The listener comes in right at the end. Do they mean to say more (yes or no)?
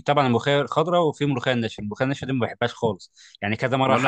no